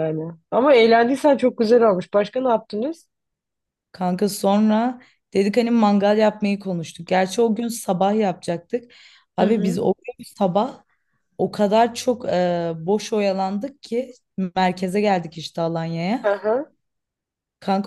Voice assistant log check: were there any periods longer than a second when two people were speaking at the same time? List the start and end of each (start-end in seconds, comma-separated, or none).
none